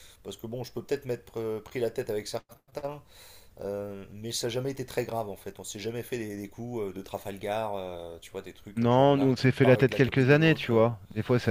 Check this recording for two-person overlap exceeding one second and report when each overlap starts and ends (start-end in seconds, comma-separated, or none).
8.7-10.8